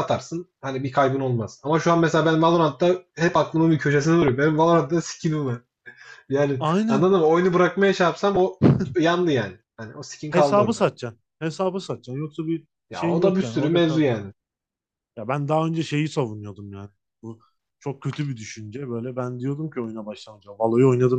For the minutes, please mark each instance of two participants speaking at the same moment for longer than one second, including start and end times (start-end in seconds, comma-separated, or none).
12.9-14.2